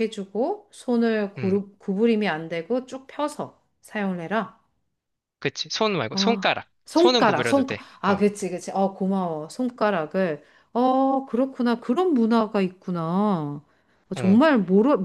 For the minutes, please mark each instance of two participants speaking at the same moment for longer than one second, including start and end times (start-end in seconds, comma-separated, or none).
6.1-8.2